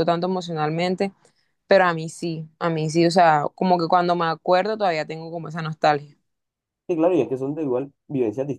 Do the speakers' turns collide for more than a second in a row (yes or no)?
no